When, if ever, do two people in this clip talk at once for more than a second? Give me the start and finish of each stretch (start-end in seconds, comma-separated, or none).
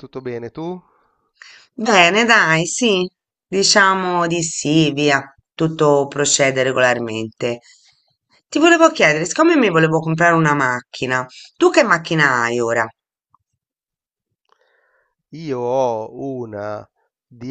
none